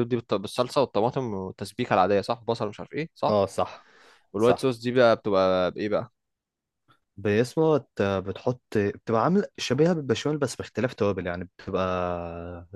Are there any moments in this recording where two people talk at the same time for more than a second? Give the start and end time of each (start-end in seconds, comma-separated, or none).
none